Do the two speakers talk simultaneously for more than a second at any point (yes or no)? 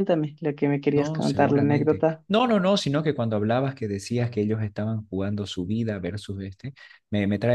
yes